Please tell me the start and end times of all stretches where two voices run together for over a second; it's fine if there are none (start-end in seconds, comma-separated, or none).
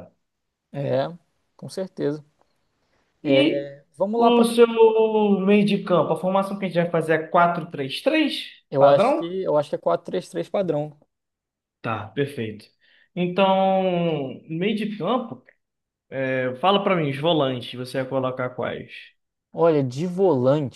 none